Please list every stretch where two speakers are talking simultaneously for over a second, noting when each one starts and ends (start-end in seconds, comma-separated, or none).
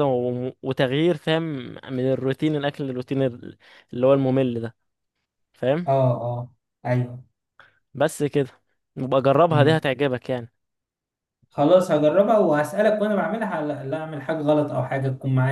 none